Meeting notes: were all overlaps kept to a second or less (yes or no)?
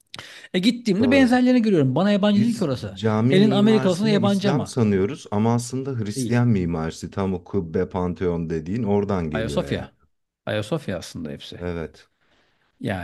no